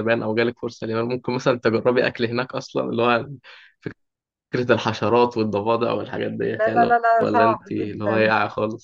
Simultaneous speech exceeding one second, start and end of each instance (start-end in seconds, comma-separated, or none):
6.4-8.3